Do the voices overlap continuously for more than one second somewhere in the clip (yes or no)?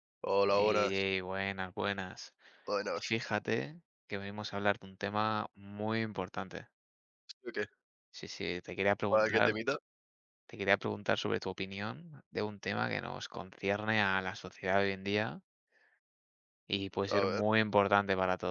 no